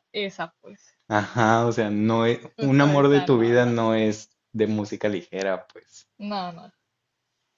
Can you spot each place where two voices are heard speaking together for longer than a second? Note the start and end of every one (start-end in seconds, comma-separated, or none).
2.6-3.8